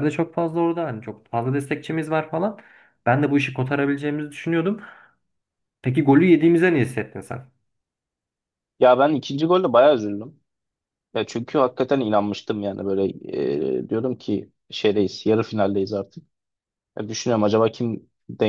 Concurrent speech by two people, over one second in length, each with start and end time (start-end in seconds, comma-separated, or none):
none